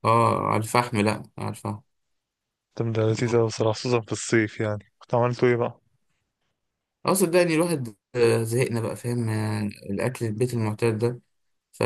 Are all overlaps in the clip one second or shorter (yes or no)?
yes